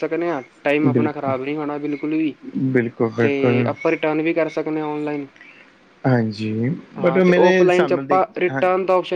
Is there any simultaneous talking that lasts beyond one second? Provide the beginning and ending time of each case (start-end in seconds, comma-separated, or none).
7.0-8.6